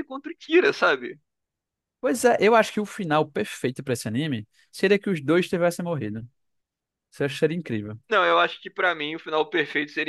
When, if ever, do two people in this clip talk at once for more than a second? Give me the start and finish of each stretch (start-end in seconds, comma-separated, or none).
none